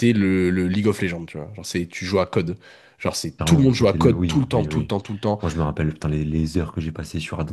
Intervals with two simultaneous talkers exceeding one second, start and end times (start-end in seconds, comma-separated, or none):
3.4-4.9